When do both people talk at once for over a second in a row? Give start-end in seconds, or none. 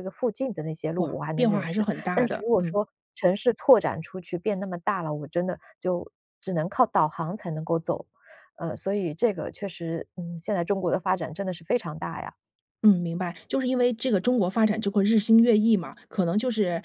1.0-2.8